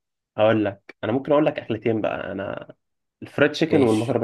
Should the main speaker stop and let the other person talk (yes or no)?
no